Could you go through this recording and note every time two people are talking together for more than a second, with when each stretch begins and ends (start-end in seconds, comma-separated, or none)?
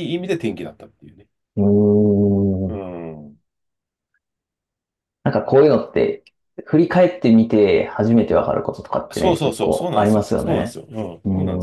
9.1-10.8